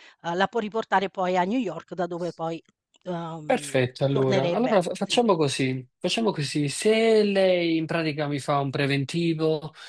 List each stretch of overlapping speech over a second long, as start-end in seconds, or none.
3.5-5.2